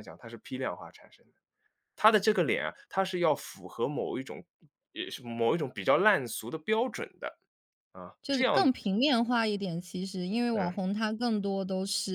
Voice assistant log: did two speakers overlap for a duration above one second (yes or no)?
no